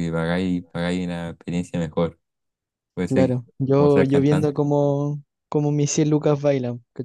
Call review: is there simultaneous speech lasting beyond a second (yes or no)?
yes